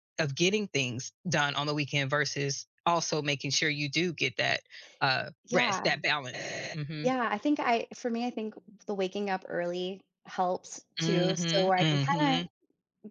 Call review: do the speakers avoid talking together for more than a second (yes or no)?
no